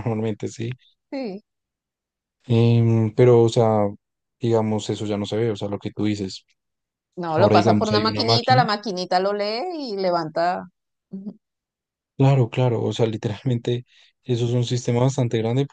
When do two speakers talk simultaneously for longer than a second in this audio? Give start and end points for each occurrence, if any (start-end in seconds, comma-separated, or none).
7.3-8.6